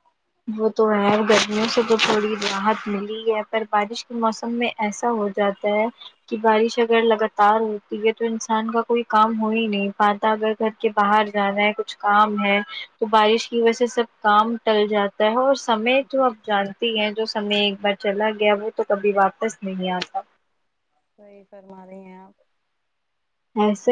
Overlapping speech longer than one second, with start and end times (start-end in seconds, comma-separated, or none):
none